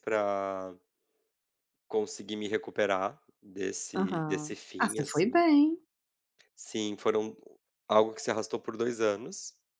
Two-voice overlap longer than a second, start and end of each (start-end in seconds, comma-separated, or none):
4.0-5.4